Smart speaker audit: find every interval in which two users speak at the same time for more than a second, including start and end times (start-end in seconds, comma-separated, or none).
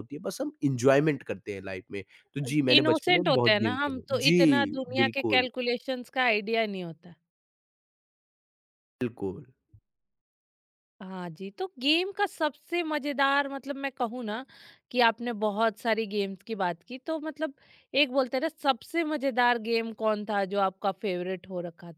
2.8-5.5